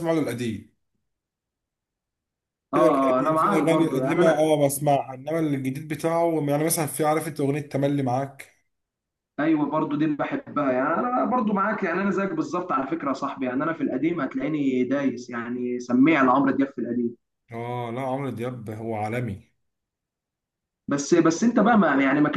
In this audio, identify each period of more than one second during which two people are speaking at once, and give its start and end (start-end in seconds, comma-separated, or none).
2.7-4.5